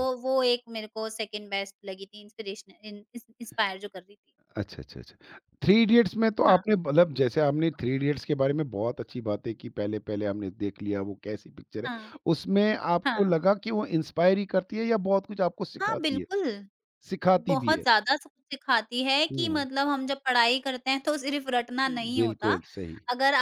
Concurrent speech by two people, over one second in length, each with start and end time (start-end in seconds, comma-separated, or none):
none